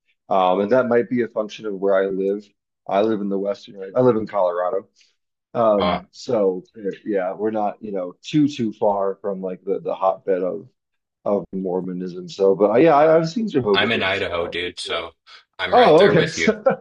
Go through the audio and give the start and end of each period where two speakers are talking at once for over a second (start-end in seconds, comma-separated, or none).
13.7-15.1